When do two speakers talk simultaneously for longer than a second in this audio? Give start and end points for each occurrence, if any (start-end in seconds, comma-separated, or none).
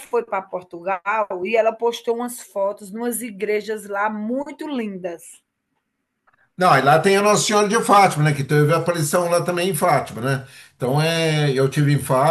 none